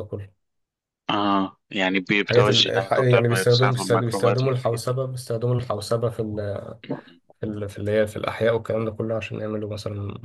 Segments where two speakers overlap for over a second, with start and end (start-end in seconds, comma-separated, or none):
2.2-5.0